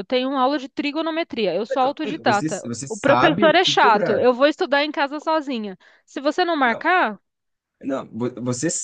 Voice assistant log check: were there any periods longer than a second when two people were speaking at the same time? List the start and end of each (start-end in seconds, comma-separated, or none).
1.7-4.2